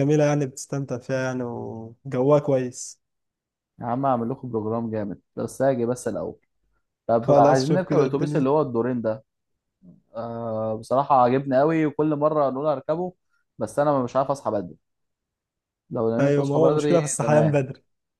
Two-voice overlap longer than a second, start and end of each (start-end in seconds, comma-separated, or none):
7.2-8.5, 16.2-17.6